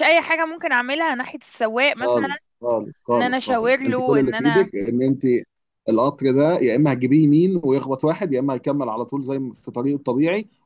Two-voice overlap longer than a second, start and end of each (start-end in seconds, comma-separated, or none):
3.1-4.7